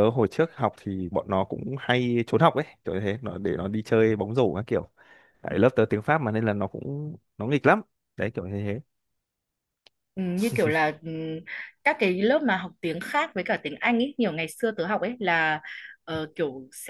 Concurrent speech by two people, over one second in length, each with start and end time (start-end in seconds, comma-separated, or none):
none